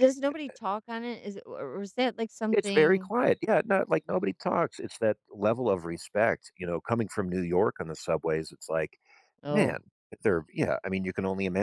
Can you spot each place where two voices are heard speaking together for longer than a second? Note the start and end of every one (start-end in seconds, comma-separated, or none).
none